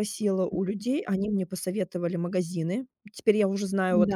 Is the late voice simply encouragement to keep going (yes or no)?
yes